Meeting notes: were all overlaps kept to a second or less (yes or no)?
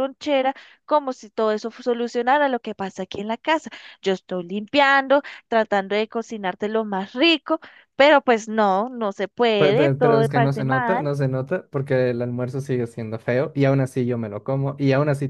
no